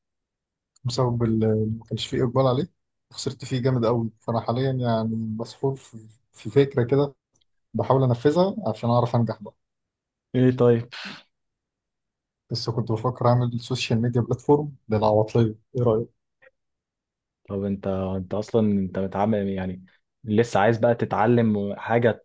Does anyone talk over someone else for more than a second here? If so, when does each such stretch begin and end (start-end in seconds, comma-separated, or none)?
none